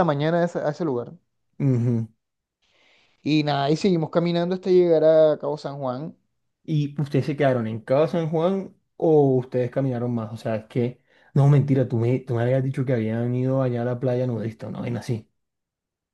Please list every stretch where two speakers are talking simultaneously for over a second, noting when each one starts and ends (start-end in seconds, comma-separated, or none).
none